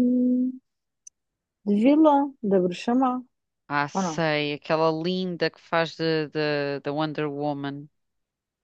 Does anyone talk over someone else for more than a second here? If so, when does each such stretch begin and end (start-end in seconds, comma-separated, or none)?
none